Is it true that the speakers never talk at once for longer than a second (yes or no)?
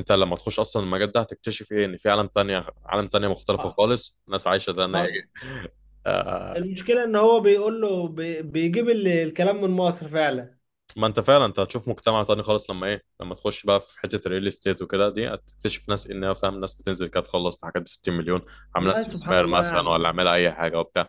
no